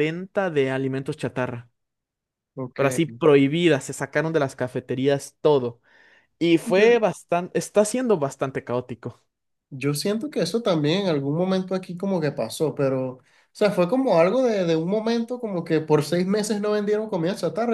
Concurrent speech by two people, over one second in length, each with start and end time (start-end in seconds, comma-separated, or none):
none